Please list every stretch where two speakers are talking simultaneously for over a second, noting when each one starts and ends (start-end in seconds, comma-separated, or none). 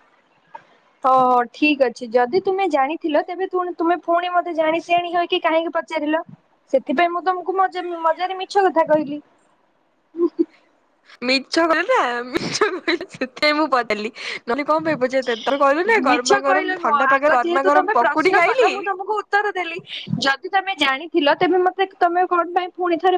16.1-18.7